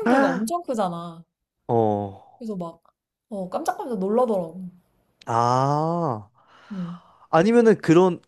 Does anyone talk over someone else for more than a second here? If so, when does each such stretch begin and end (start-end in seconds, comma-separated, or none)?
none